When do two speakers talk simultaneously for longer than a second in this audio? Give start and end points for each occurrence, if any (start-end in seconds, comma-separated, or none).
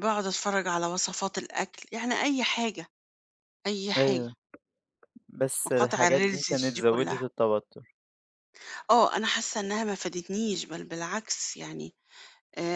5.7-7.3